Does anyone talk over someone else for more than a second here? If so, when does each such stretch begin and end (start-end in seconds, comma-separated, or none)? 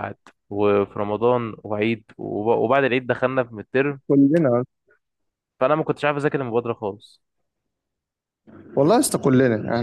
none